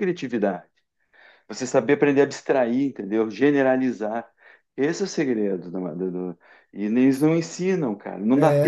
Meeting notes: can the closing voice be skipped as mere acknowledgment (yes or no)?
no